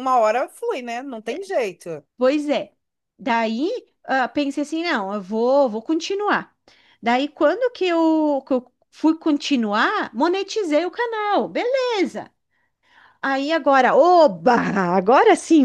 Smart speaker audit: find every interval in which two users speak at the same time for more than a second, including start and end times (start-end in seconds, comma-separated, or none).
none